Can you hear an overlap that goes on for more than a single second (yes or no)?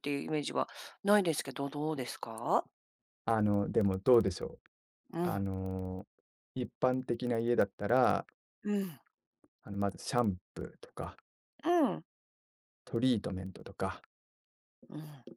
no